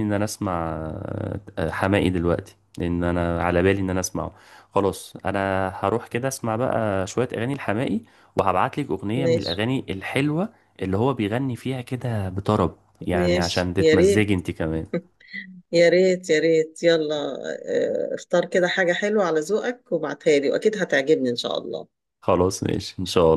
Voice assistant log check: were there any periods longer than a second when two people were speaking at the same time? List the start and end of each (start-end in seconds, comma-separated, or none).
13.1-14.4